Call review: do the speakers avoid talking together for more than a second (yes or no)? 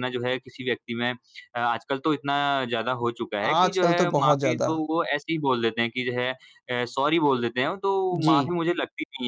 no